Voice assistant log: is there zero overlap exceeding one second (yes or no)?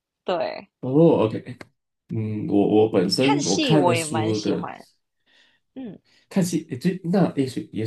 no